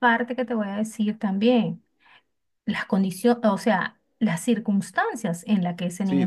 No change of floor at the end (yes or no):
no